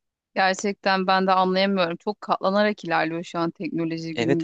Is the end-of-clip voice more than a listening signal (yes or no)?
yes